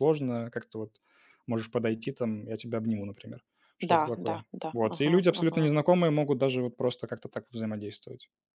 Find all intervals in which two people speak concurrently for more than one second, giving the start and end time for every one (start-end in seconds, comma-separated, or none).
3.9-5.7